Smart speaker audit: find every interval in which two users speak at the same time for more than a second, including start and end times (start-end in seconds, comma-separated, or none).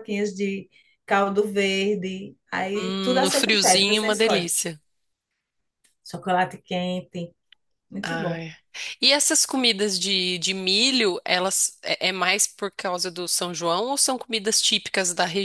2.7-4.5